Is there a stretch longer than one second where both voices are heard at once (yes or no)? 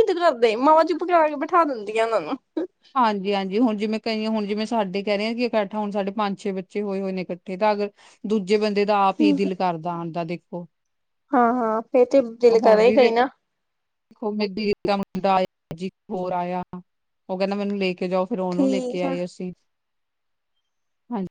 no